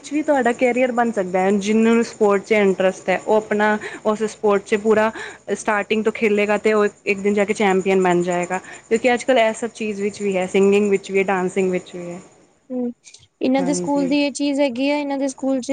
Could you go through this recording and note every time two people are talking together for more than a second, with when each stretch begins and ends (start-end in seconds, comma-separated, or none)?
none